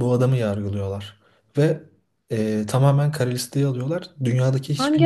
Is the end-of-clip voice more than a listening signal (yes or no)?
no